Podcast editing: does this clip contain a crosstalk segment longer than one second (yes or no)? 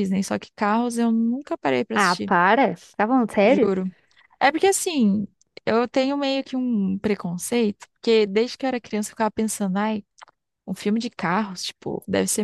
no